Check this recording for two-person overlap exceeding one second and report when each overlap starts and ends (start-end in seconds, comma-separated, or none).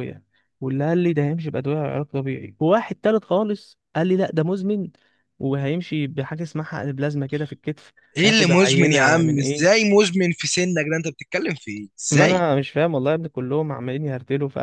8.2-9.8